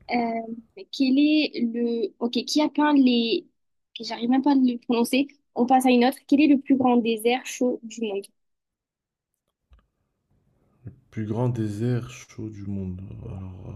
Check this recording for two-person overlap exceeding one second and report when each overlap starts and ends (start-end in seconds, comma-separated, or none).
none